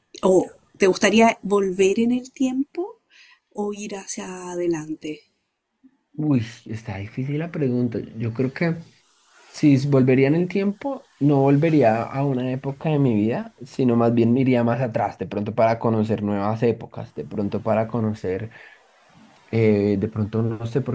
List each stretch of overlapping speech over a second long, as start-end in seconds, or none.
none